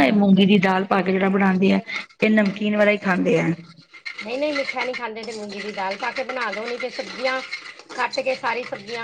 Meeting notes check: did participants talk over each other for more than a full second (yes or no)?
no